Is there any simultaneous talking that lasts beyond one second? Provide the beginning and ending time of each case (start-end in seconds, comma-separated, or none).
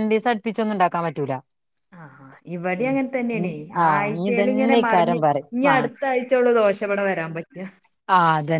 3.9-5.9